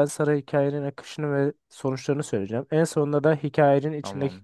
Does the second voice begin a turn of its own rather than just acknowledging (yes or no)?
no